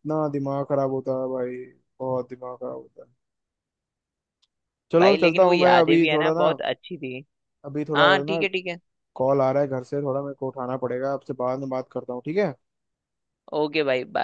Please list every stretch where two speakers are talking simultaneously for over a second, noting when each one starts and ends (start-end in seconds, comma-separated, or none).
5.0-6.5